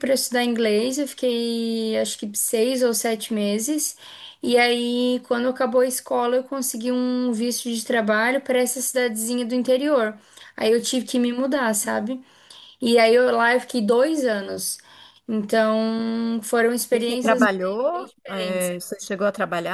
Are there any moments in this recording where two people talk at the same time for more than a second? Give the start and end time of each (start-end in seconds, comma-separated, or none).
16.9-18.7